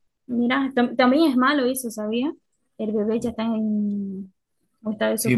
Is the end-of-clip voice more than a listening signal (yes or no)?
yes